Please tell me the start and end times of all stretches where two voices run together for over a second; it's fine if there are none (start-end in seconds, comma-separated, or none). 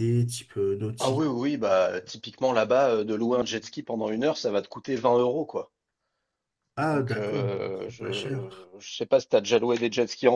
6.9-8.7